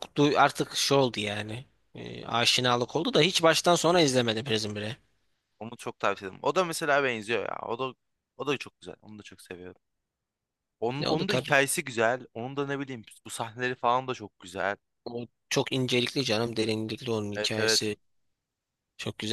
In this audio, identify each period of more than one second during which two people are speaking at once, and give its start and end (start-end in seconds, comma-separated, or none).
none